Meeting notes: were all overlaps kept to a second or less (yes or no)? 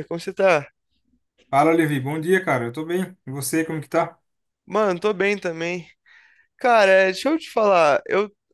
yes